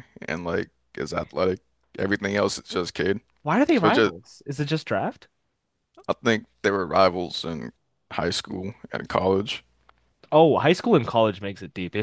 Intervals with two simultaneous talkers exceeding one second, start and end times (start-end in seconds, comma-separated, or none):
none